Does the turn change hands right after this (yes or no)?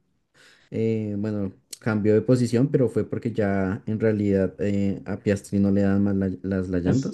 yes